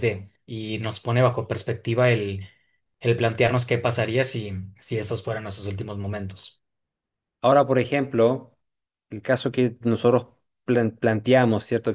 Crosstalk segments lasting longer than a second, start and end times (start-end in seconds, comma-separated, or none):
none